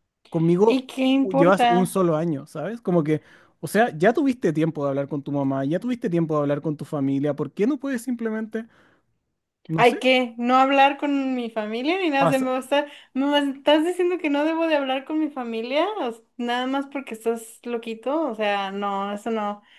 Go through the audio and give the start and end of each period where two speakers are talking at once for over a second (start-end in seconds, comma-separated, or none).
0.7-2.0